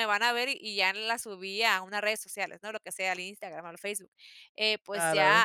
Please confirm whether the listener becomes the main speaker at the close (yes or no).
no